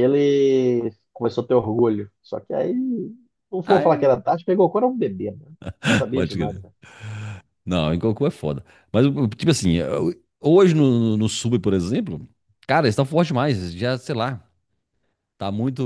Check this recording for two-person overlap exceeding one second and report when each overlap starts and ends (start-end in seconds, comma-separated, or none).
none